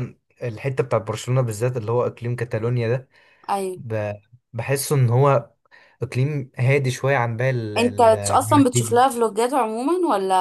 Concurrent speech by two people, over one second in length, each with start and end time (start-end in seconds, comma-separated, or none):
7.8-9.1